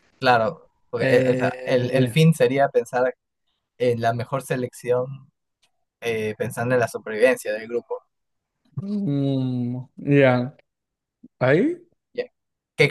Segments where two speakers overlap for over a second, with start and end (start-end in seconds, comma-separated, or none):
0.9-2.1